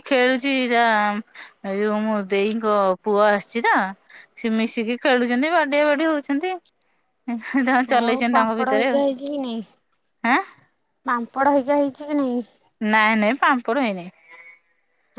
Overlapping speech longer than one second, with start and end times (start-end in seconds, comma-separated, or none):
8.1-9.6